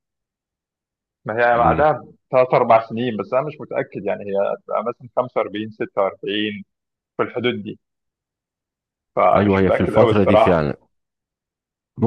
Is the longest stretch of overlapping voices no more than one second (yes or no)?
no